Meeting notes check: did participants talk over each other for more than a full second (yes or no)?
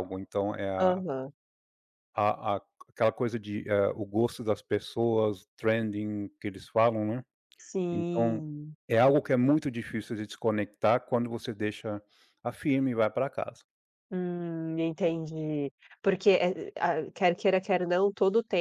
no